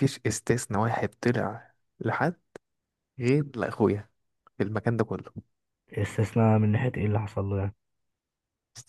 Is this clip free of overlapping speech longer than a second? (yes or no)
yes